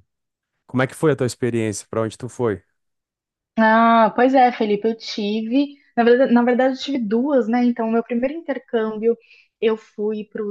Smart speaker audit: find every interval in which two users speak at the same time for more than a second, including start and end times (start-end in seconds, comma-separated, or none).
none